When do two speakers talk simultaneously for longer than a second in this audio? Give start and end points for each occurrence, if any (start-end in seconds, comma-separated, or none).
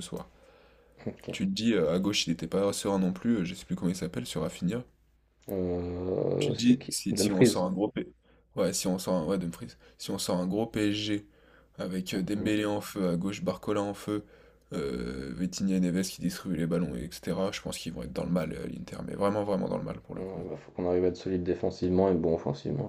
6.4-7.6